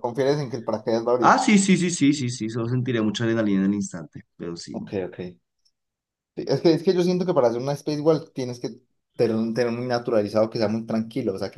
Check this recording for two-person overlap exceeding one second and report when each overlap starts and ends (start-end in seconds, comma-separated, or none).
none